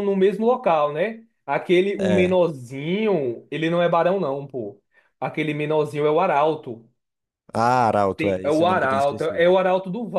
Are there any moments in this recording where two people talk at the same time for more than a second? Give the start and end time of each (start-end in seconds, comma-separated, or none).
8.2-9.5